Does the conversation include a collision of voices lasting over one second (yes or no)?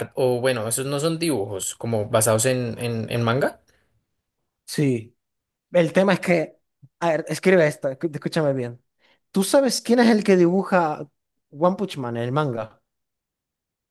no